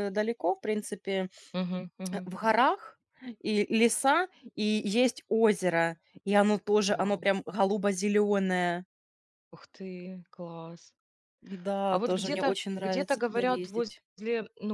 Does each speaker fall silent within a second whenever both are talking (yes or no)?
no